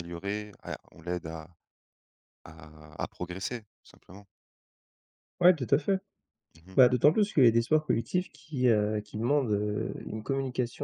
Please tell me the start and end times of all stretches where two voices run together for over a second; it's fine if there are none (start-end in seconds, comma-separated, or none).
none